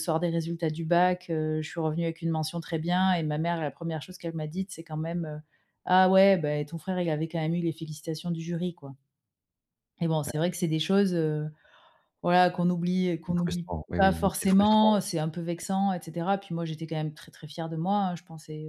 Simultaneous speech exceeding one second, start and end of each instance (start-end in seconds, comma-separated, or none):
13.3-14.9